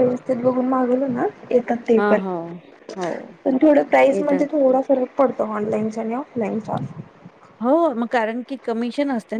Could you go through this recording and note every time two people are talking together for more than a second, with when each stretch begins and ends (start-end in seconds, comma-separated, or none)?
none